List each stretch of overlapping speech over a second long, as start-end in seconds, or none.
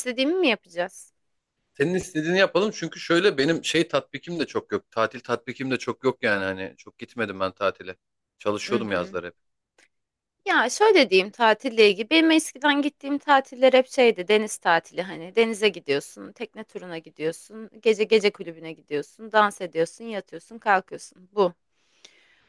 none